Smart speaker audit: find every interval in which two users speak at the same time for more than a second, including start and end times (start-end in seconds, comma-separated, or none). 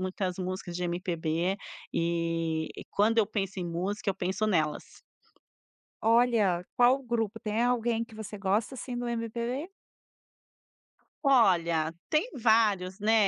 none